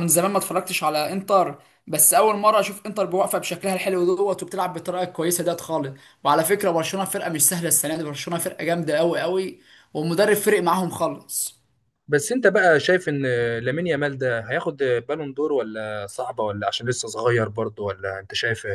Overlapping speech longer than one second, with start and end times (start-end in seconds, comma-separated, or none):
none